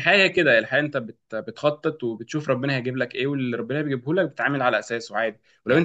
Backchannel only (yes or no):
yes